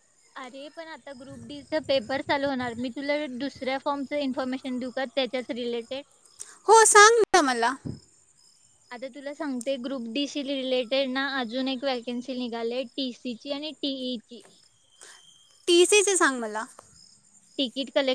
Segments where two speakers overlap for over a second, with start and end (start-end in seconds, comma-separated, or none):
none